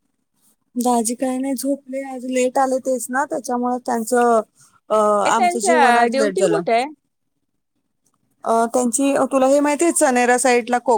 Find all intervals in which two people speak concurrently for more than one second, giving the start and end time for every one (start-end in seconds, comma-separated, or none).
5.3-6.6